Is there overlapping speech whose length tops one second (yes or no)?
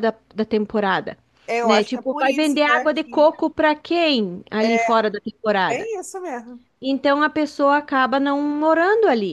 yes